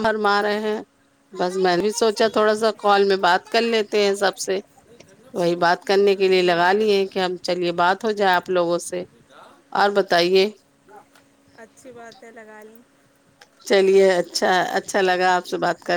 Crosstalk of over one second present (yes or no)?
yes